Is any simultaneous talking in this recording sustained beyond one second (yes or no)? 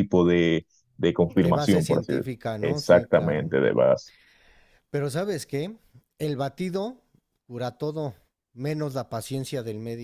yes